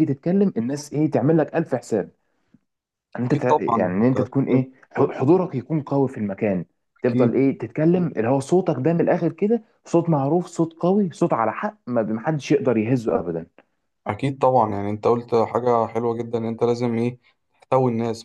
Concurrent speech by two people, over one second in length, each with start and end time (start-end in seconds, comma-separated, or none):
3.3-4.7